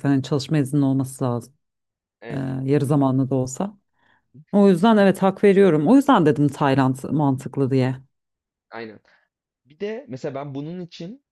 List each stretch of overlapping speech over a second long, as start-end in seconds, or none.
none